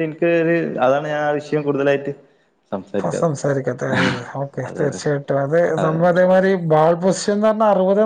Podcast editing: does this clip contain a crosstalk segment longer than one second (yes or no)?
no